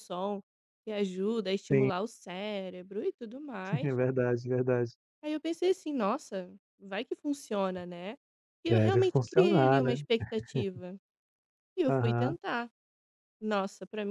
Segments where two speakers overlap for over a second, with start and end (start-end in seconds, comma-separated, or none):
8.7-10.0